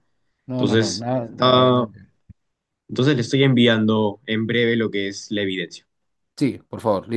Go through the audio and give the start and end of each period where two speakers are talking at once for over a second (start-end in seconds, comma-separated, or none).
0.5-1.9